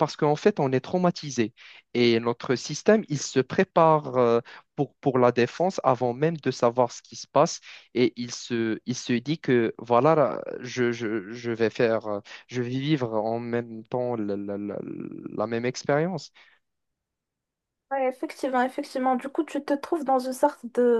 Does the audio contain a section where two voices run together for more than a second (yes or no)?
no